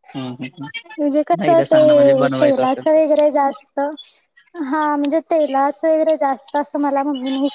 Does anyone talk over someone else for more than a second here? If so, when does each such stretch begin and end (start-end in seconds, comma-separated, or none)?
1.4-3.0